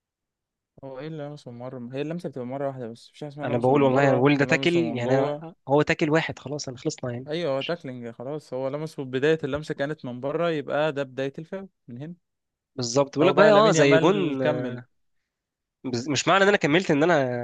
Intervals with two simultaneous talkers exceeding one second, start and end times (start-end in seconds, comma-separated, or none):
3.4-5.5, 13.2-14.8